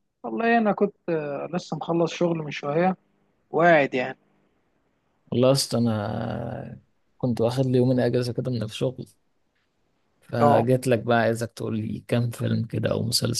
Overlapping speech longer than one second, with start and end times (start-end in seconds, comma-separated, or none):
none